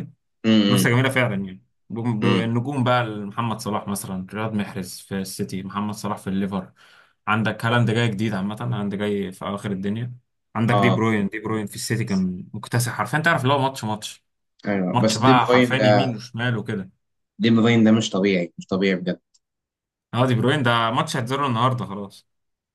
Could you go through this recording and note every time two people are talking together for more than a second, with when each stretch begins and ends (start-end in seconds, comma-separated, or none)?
14.9-16.2